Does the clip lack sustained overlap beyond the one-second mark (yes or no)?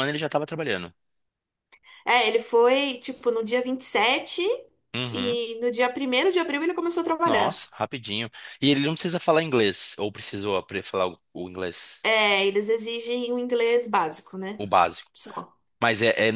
yes